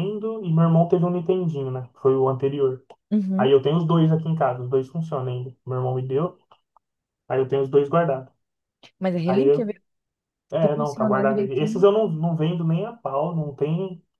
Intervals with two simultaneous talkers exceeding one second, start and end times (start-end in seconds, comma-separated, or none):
10.6-11.8